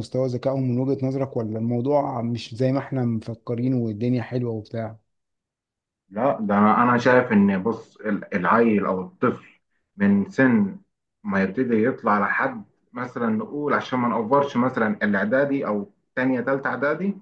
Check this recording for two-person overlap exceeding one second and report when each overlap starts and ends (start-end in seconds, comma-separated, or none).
none